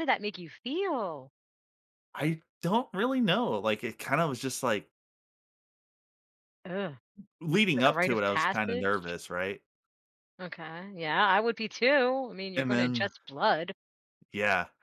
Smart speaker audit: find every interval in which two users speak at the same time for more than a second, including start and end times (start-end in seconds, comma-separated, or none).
7.8-9.2